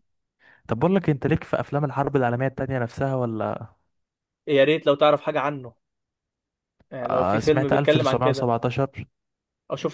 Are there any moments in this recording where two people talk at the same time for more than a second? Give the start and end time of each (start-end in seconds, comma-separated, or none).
7.1-8.5